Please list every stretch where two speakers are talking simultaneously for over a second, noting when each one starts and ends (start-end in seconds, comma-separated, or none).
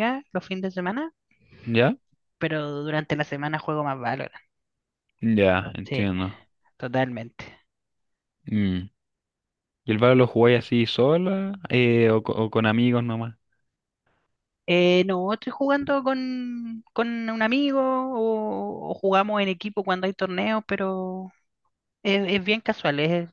none